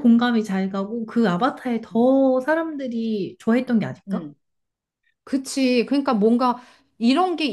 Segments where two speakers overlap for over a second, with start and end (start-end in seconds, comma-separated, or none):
none